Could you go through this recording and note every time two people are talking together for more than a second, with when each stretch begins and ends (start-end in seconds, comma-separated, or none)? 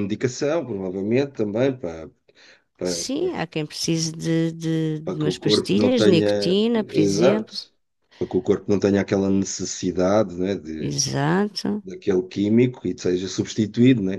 5.0-7.5